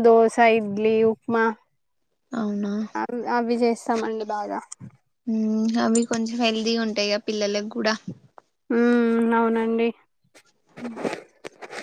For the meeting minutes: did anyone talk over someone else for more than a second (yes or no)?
no